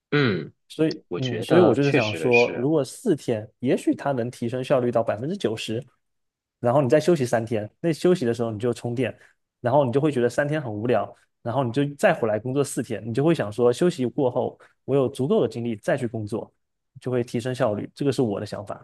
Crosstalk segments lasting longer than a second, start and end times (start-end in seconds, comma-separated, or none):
1.1-2.7